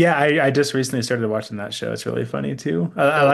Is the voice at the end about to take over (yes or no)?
no